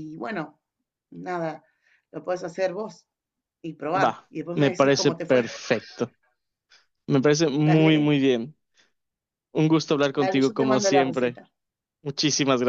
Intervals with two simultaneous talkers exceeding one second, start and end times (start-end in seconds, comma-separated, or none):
3.9-5.4, 10.2-11.4